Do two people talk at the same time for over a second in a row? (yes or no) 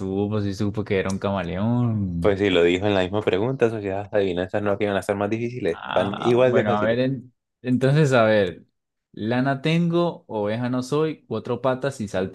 yes